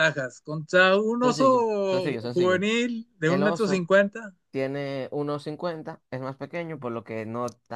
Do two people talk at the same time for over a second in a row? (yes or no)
yes